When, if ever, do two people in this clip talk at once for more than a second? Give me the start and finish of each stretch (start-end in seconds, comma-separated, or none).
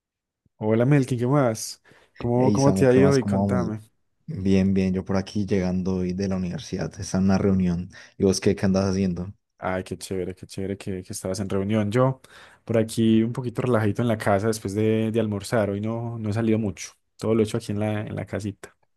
2.4-3.7